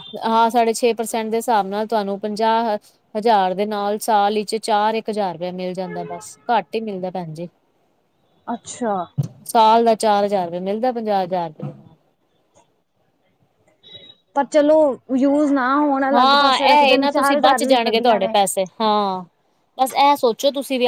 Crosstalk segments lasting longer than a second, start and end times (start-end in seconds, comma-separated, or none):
16.1-18.4